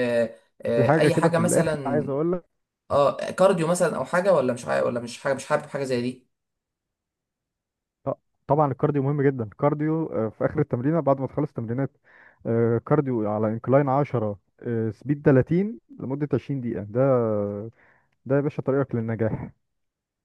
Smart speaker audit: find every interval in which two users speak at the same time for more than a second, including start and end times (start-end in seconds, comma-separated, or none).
0.8-2.1